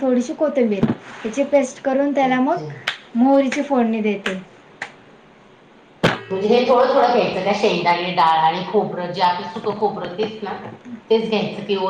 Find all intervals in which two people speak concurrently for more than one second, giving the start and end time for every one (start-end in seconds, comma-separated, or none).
none